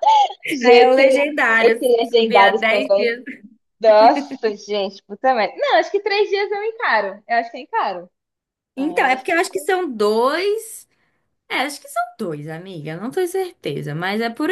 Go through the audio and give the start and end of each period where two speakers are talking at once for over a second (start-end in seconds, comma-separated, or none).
0.7-3.2